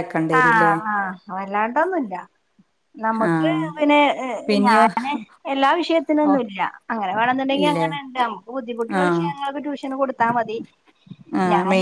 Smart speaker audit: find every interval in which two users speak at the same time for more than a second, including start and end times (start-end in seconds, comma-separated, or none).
none